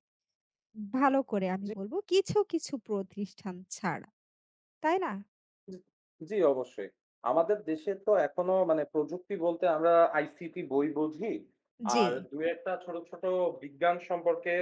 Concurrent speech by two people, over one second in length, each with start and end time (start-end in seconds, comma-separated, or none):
none